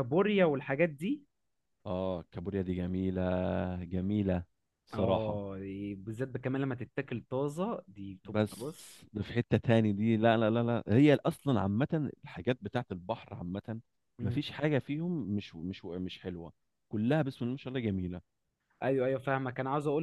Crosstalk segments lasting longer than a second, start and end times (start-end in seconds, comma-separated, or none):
none